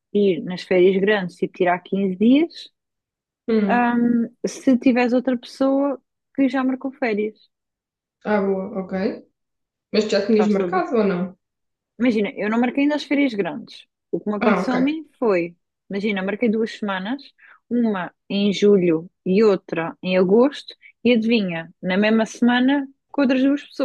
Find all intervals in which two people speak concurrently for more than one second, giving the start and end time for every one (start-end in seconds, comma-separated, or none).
none